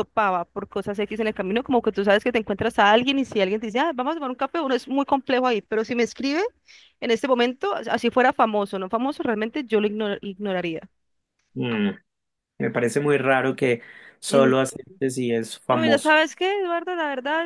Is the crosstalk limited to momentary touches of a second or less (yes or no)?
yes